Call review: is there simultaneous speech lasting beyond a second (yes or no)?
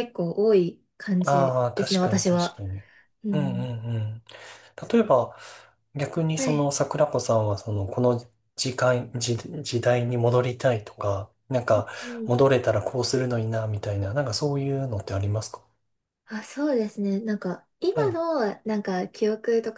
yes